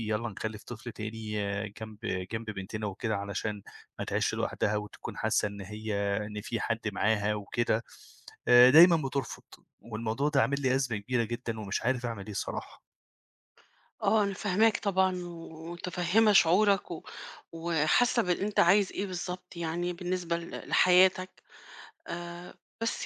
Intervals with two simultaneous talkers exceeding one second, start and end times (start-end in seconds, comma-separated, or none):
none